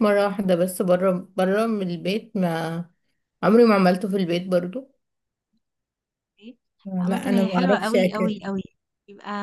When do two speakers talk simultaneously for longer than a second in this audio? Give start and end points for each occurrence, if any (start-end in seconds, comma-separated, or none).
7.0-8.3